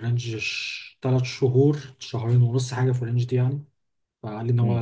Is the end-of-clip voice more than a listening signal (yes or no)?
no